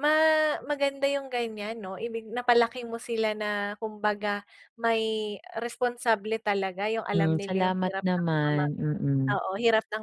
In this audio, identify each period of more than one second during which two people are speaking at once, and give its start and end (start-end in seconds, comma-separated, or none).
7.1-8.6